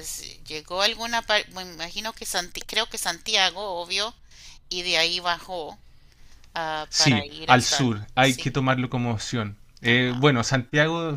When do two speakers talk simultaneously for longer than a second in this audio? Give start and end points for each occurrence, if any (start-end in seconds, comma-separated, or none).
6.9-8.6